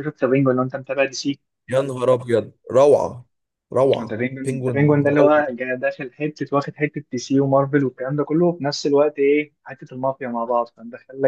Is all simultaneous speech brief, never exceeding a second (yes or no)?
no